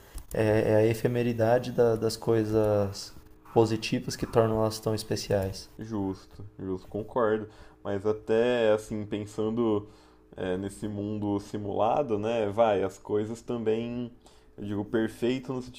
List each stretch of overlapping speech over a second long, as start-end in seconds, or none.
none